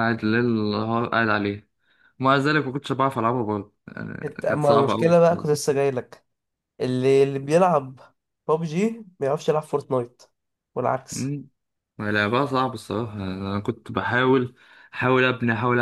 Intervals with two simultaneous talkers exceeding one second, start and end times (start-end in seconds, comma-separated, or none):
4.2-5.5